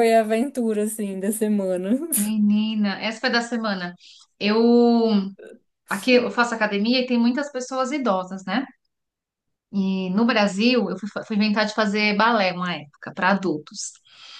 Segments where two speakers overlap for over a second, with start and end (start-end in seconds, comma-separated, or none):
none